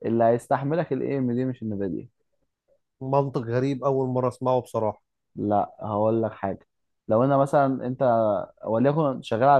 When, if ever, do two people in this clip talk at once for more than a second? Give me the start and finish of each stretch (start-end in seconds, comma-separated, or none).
none